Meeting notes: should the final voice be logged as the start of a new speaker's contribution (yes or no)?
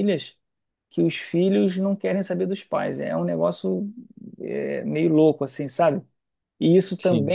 no